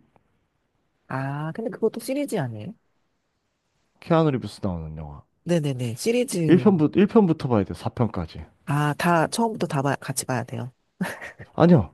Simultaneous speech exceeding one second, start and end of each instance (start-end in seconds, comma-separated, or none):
none